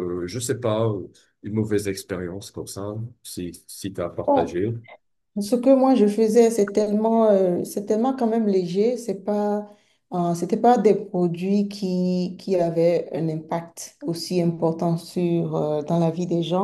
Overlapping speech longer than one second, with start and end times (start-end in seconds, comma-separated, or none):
none